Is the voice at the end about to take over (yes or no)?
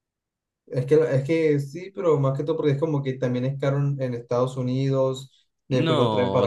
yes